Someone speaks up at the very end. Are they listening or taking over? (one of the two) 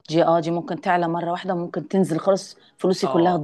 taking over